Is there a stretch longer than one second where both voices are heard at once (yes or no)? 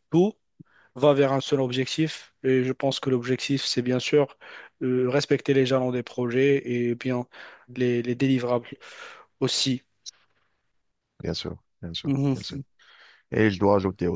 no